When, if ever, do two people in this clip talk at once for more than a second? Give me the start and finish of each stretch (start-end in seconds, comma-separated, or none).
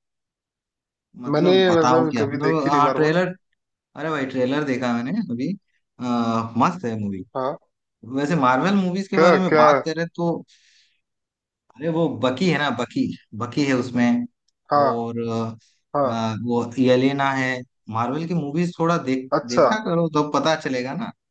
1.3-3.2